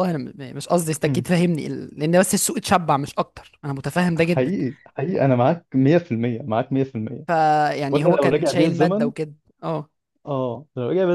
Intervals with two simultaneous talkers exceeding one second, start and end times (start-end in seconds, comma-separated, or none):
7.9-9.1